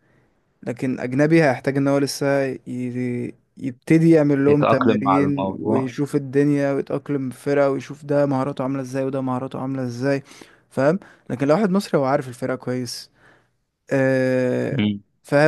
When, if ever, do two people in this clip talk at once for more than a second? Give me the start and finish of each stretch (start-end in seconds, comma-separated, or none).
4.5-5.9